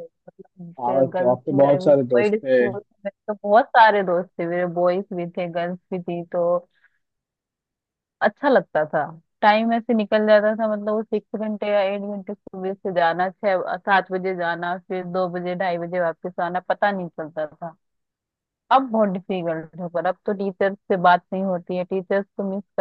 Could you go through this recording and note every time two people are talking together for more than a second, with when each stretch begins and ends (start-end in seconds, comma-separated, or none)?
0.8-2.6